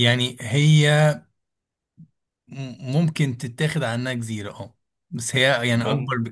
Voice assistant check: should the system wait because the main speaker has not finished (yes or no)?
yes